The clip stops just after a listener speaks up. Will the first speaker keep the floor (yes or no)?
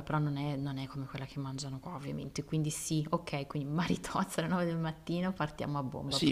no